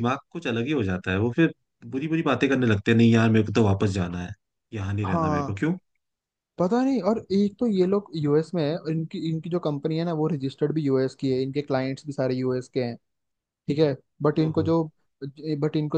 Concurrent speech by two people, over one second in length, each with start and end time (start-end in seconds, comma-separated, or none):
none